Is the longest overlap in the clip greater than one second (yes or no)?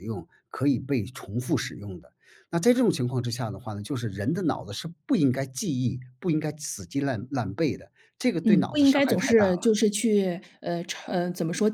yes